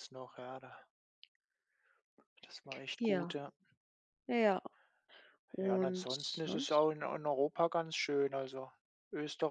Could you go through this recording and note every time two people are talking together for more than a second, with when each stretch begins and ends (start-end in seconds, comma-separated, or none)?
5.6-6.9